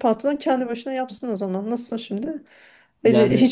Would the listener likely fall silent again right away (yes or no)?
yes